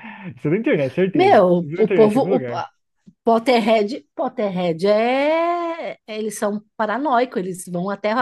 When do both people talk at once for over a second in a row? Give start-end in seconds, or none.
1.1-2.6